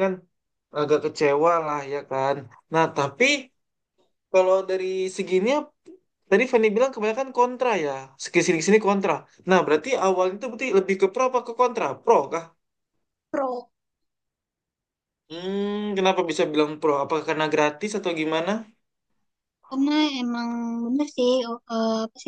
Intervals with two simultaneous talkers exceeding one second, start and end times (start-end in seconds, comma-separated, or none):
none